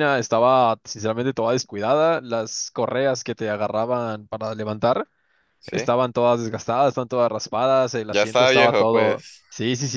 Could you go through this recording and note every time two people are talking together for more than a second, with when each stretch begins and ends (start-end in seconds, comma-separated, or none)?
8.1-9.4